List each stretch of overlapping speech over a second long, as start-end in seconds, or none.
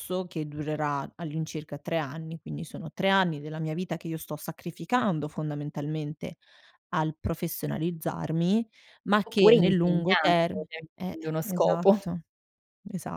9.3-12.0